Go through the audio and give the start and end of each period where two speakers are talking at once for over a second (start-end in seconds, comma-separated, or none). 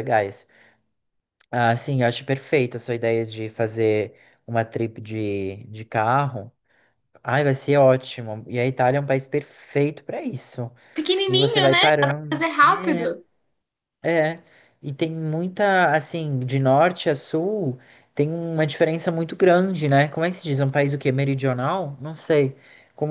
11.3-13.1